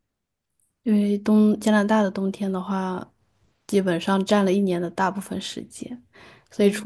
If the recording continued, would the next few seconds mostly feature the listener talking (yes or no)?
no